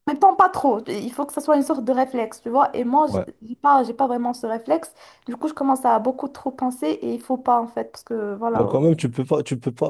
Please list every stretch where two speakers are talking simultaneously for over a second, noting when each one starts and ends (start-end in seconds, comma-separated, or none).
none